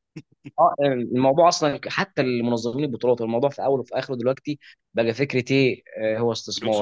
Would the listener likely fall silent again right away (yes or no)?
yes